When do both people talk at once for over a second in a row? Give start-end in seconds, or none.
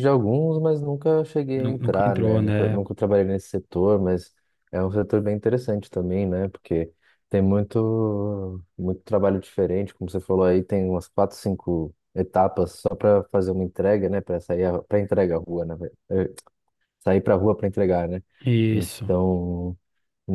1.6-2.8